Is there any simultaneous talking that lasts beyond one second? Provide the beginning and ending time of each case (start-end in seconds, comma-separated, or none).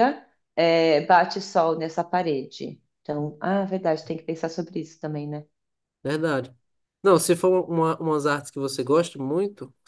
none